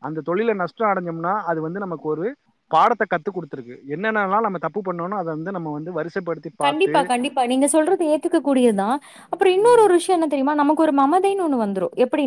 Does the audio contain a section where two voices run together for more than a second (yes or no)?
no